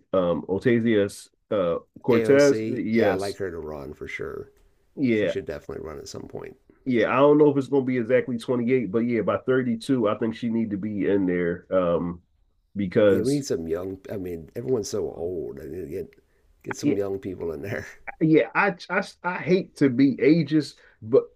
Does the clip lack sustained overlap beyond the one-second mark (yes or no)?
no